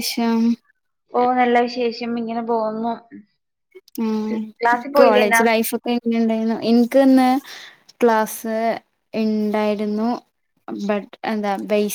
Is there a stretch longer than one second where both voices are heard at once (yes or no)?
no